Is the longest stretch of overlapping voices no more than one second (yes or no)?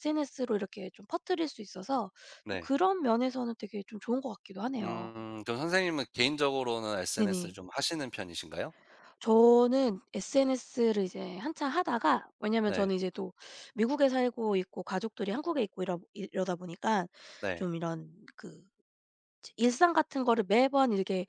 yes